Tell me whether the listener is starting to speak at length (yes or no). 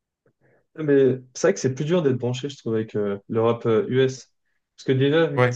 no